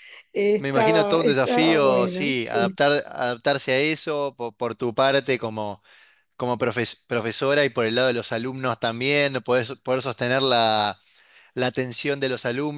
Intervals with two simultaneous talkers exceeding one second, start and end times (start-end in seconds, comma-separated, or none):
0.6-2.8